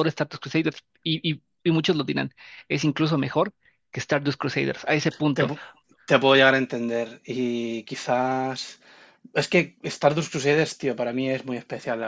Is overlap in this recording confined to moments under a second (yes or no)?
yes